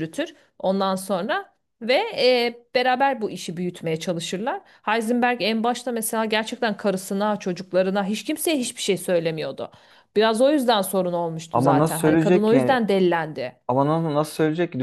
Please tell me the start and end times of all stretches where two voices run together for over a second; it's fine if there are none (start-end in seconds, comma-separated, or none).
11.5-12.8